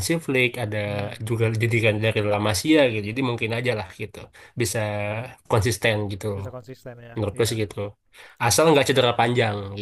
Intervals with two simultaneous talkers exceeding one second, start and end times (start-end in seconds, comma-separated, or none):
none